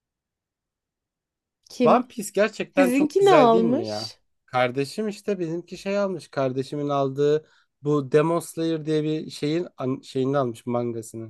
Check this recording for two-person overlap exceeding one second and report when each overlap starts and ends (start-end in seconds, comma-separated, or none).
2.7-4.2